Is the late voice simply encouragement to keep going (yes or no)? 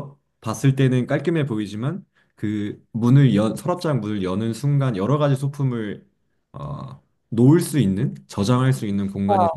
yes